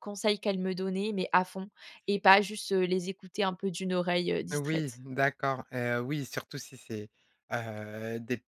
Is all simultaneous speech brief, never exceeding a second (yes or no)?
yes